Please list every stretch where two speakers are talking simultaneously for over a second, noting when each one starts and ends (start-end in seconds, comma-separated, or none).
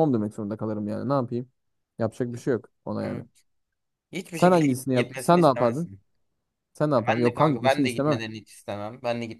4.3-5.9, 7.0-8.2